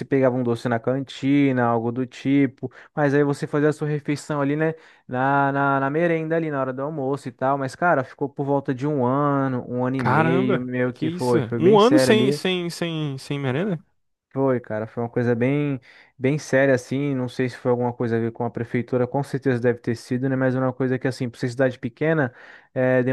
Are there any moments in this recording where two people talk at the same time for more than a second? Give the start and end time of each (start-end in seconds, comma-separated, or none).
10.0-12.1